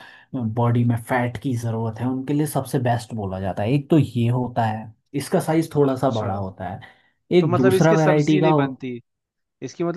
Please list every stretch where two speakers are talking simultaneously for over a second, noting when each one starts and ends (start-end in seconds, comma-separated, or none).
7.4-8.7